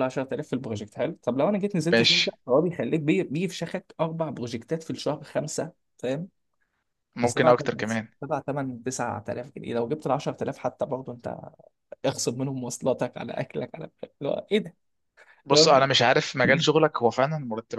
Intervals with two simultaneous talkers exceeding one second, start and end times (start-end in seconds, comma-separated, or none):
none